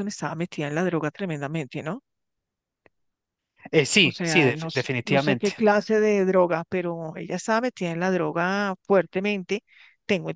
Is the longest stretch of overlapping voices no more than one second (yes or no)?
no